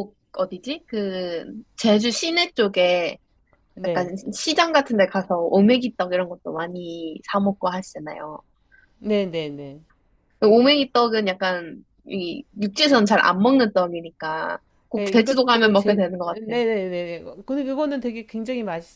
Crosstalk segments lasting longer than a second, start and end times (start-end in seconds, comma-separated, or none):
14.9-16.6